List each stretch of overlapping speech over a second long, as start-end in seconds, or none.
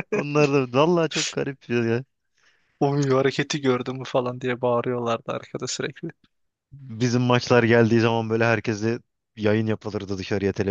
none